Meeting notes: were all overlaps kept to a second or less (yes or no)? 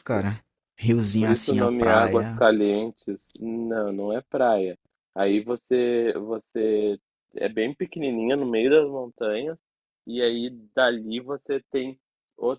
no